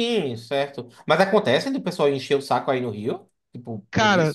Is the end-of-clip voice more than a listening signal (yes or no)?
yes